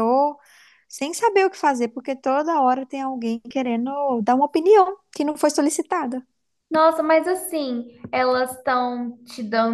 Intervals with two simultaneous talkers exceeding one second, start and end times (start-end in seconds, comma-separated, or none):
none